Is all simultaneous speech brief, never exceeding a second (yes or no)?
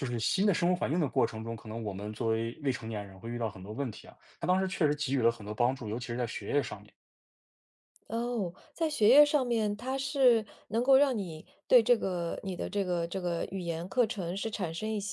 yes